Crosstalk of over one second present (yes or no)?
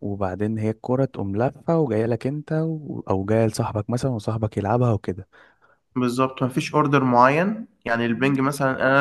no